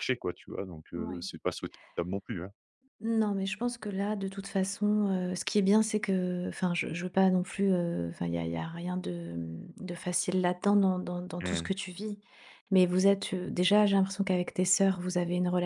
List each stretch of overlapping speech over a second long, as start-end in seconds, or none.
none